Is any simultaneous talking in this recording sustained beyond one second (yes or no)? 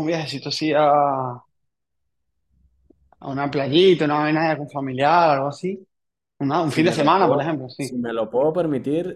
yes